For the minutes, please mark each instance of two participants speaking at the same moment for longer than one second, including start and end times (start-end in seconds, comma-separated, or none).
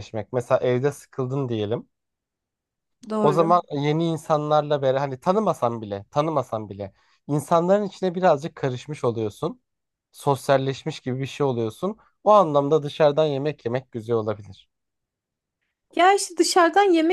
none